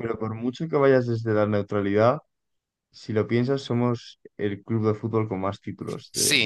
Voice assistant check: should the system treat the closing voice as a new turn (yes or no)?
yes